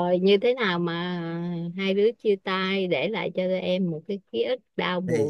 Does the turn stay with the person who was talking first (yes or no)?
no